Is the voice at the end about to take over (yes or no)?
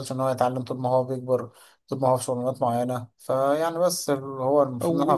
yes